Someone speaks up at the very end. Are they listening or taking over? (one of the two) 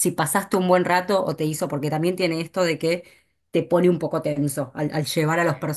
listening